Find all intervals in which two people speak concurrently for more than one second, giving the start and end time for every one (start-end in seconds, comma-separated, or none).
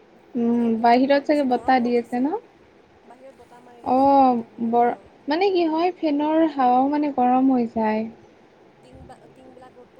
0.5-2.2